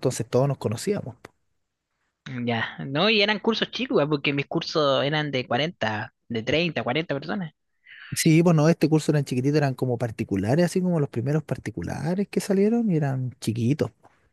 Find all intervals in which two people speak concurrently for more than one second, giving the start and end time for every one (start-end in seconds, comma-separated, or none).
none